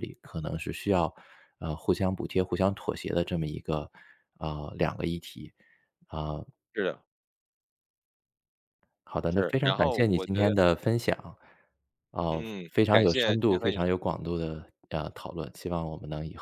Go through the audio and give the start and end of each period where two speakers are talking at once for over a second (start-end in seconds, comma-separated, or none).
9.3-10.6, 12.3-13.9